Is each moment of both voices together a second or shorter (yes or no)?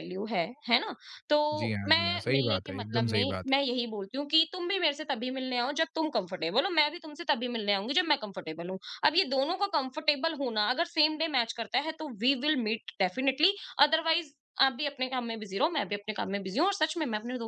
no